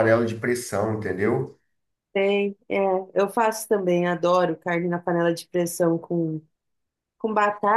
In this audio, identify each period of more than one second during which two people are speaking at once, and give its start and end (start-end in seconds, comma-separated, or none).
none